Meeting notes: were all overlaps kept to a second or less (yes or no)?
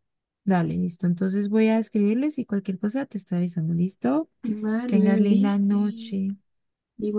no